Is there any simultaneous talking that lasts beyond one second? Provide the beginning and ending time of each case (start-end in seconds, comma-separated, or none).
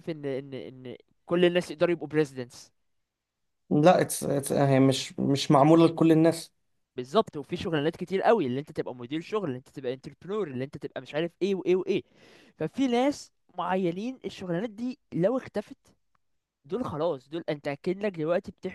none